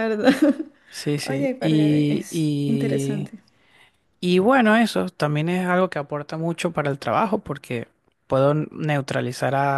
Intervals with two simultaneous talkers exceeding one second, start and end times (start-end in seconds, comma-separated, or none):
1.2-3.3